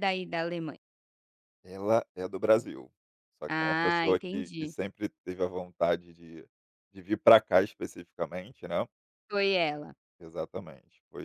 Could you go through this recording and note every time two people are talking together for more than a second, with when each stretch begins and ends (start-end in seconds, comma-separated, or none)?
3.5-4.7